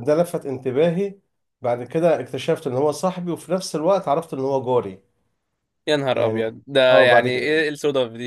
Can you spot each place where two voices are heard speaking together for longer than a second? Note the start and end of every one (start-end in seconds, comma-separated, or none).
6.1-7.6